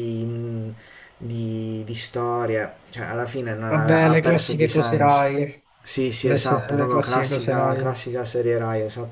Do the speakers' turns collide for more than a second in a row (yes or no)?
yes